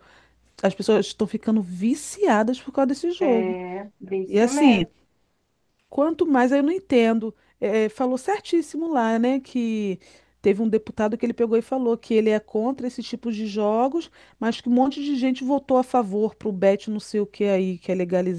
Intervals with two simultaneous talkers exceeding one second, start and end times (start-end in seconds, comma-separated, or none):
none